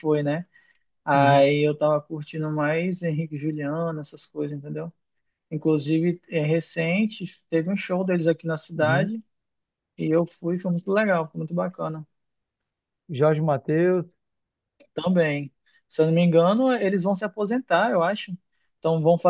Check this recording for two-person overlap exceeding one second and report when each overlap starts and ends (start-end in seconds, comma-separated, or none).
none